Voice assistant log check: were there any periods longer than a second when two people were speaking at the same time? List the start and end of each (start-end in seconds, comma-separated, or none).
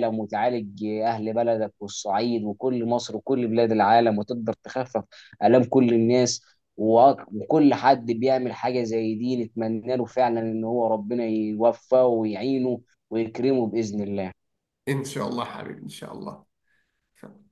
none